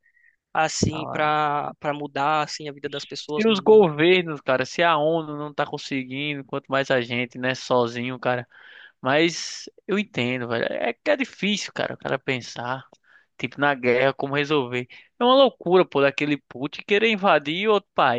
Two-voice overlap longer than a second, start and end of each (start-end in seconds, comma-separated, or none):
none